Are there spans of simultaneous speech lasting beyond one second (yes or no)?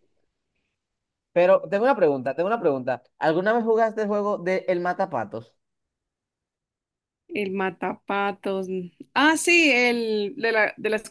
no